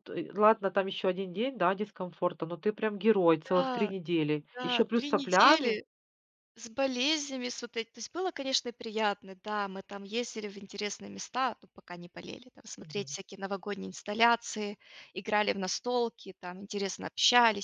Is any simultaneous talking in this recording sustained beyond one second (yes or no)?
yes